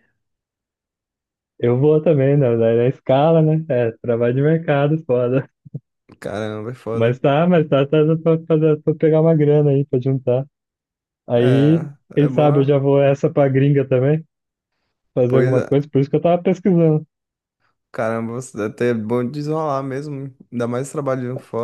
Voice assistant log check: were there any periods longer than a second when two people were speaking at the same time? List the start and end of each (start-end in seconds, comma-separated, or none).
11.3-12.8